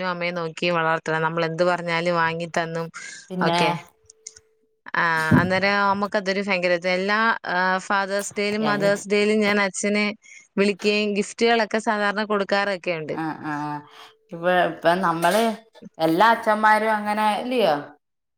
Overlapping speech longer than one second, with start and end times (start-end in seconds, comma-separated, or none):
none